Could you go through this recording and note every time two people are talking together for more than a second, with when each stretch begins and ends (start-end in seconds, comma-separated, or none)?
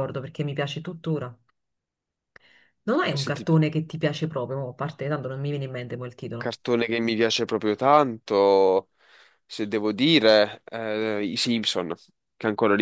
none